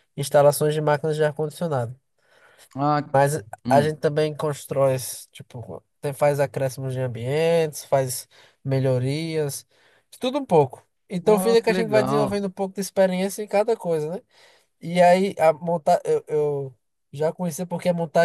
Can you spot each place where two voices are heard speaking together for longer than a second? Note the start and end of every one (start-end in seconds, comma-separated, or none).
11.2-12.4